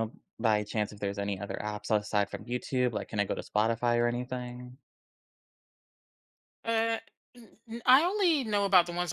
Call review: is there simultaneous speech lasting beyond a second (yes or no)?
no